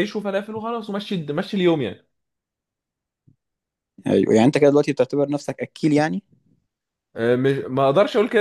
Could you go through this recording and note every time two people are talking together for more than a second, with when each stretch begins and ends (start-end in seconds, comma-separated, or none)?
none